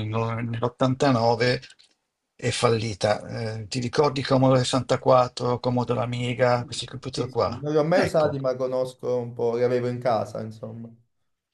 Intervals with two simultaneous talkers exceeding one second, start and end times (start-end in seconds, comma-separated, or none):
6.5-8.4